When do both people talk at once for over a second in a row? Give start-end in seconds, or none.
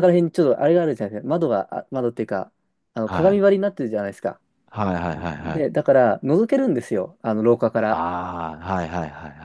none